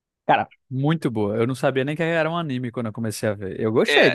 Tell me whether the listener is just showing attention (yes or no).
no